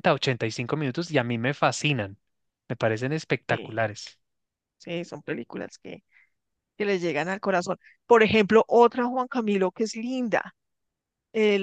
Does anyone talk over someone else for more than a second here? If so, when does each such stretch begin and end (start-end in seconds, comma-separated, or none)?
none